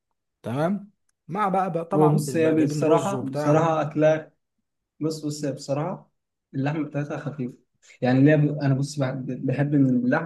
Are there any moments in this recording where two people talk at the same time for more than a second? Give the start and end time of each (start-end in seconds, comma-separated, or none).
1.9-3.7